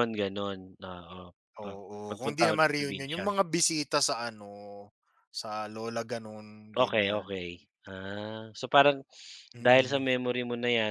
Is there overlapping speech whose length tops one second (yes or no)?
yes